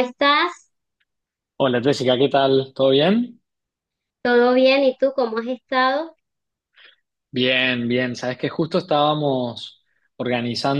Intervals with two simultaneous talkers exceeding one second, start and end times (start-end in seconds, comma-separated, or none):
none